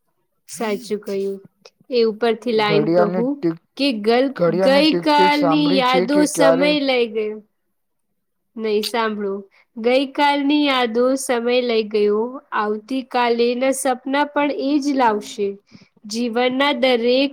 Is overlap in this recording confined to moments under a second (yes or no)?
no